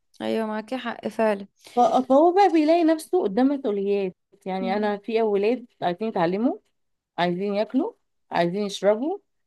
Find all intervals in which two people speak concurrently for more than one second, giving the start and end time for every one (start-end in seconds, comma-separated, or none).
none